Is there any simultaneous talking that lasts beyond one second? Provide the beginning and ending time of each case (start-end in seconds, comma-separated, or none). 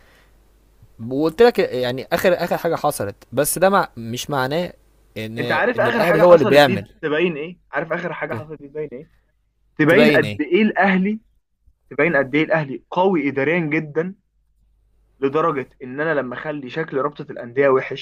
5.4-6.9